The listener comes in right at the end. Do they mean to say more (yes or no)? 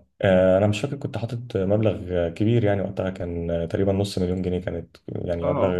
no